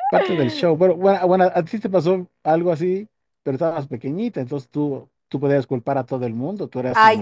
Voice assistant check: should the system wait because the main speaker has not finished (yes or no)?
no